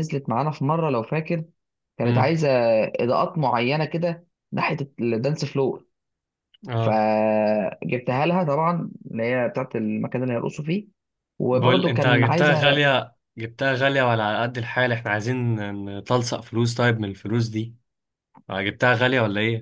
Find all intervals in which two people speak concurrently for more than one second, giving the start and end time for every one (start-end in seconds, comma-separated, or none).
11.5-12.8